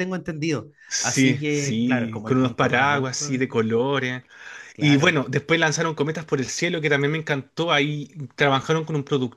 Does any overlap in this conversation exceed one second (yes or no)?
yes